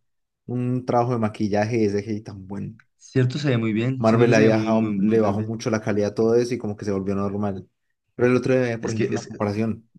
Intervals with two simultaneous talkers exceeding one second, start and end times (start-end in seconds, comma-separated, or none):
4.0-5.5